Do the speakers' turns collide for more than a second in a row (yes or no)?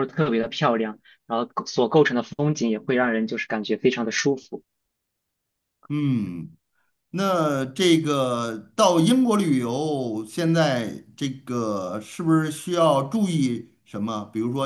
no